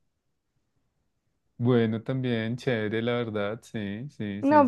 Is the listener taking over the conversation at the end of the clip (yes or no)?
yes